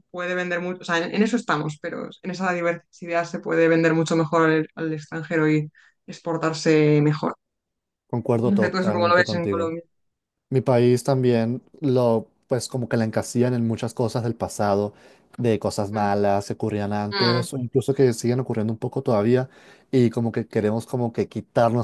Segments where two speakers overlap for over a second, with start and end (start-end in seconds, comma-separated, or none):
8.4-9.7